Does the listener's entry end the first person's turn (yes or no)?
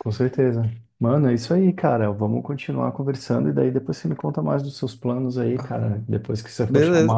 yes